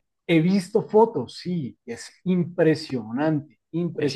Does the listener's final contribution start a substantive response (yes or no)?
yes